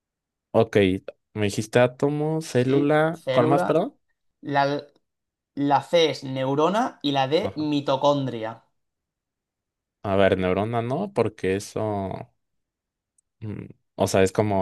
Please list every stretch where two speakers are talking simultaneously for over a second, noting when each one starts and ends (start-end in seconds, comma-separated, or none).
2.5-3.9